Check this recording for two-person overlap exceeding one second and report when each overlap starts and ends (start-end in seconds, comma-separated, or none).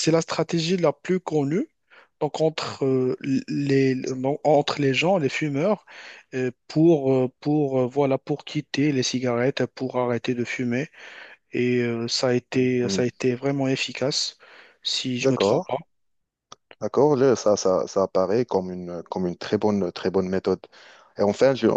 none